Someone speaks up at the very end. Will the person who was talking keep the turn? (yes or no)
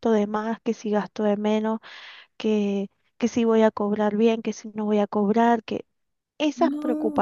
yes